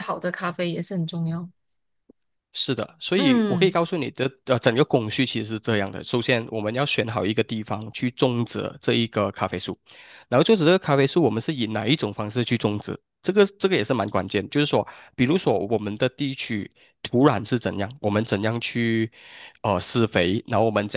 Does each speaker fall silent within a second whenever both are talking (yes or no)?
yes